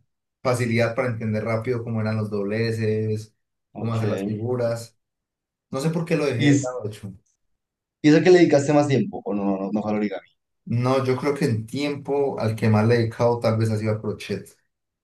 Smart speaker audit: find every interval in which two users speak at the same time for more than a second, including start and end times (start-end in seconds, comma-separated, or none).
none